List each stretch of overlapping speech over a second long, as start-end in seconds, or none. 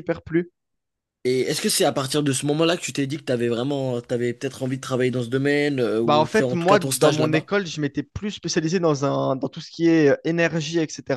6.0-7.5